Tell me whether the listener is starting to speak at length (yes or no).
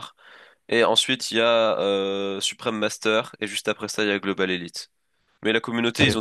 no